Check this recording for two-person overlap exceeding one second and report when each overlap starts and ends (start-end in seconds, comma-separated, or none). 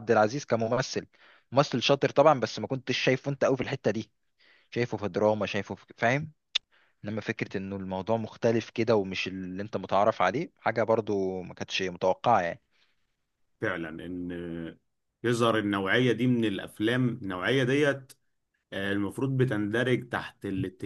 none